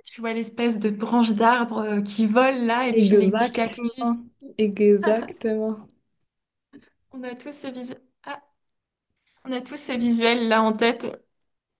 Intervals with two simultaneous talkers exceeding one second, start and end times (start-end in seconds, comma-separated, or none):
3.0-4.2